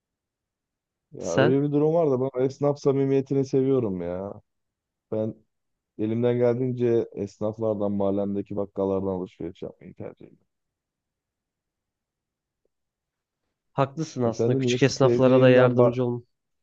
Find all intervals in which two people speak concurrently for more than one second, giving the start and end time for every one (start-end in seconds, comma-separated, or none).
14.2-15.9